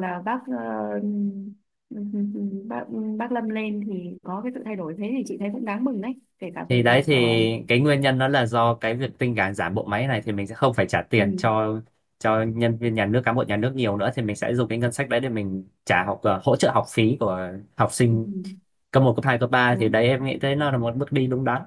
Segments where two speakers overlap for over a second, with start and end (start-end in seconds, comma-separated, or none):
none